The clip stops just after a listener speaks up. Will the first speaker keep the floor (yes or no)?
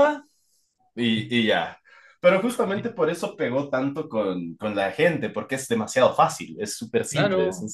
no